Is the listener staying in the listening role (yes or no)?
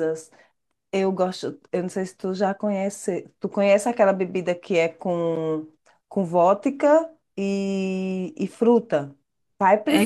no